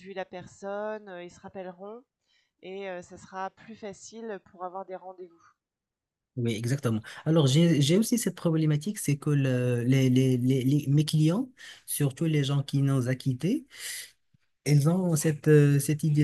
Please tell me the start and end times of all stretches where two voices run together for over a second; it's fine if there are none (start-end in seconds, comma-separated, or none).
none